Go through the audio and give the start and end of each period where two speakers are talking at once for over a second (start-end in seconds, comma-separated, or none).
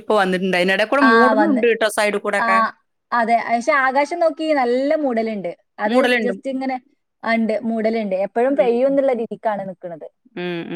none